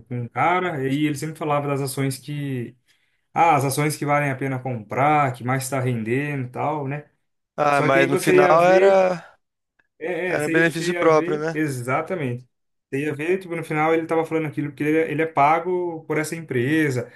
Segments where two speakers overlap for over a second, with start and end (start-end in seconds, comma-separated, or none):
7.7-9.0, 10.3-11.6